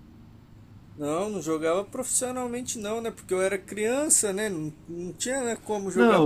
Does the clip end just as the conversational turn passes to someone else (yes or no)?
yes